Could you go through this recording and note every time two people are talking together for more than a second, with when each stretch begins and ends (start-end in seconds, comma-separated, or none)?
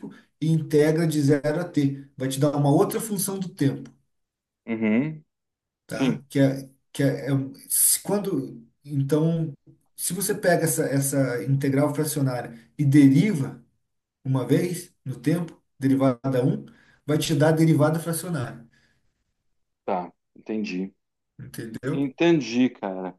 none